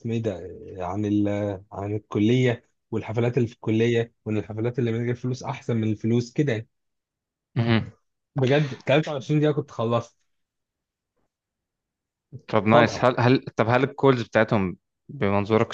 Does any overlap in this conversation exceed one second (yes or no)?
no